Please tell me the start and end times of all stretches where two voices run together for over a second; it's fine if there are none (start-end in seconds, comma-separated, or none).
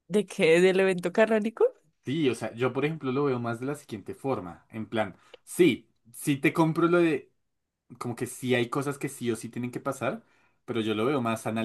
none